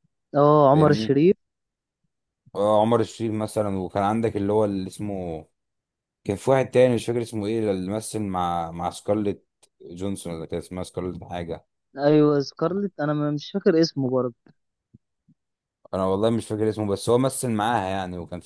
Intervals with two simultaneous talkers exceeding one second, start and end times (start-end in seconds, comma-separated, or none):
none